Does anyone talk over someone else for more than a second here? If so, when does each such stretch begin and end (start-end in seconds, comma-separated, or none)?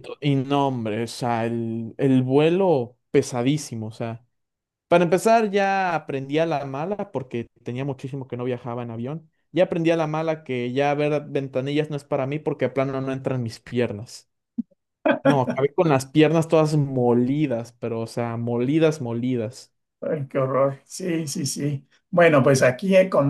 none